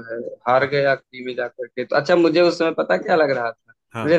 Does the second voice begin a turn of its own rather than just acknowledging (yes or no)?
no